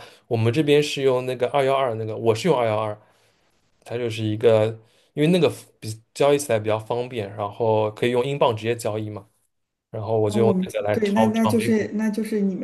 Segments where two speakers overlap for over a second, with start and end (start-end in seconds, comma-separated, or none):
10.3-11.9